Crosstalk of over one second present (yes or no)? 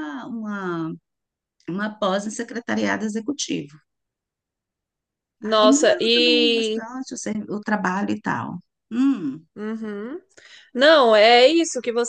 yes